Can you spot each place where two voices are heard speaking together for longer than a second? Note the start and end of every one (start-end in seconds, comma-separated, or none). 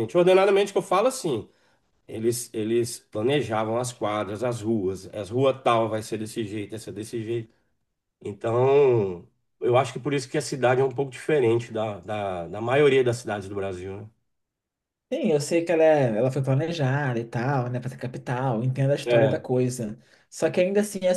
none